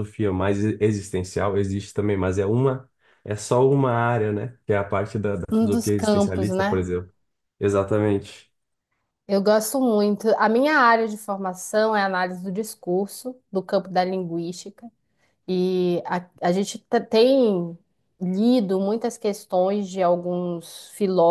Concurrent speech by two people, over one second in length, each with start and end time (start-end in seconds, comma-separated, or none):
5.5-6.8